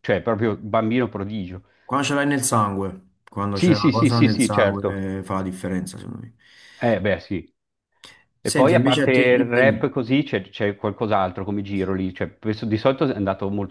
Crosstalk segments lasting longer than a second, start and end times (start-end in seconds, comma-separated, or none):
3.5-5.0, 8.4-9.9